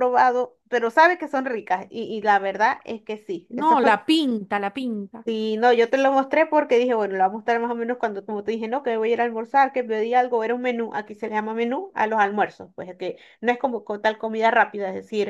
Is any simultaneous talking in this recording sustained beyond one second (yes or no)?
no